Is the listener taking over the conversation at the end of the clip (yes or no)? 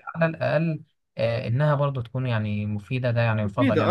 yes